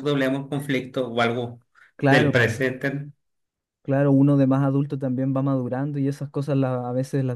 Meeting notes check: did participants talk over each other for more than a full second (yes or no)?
no